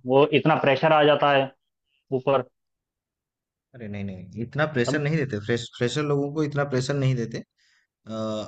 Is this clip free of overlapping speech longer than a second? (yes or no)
yes